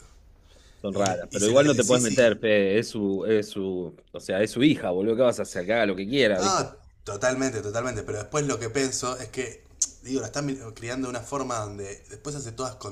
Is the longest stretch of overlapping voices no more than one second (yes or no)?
no